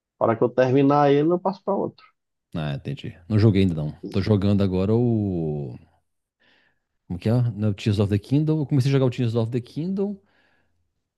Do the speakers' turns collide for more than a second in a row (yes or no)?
no